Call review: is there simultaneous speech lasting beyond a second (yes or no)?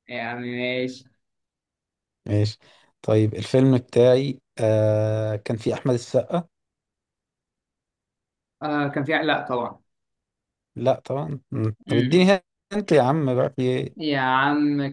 no